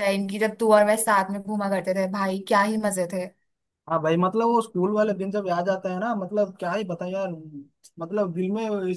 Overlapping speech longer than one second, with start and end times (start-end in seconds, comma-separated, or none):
none